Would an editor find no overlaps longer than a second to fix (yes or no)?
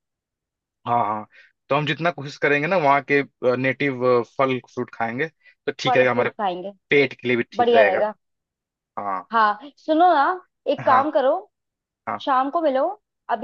yes